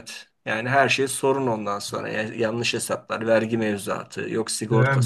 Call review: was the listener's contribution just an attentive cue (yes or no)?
no